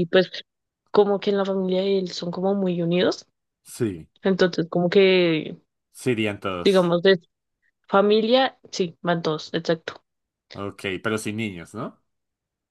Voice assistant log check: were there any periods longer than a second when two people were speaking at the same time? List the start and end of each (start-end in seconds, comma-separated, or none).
none